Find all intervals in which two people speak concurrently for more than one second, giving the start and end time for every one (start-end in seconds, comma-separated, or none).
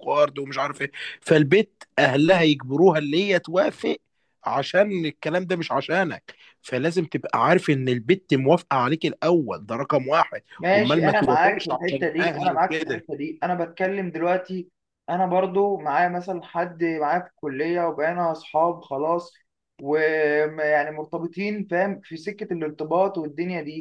10.6-13.0